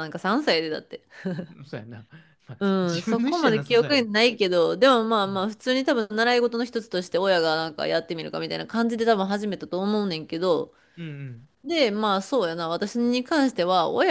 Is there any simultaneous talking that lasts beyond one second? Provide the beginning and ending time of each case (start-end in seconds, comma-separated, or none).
2.6-4.1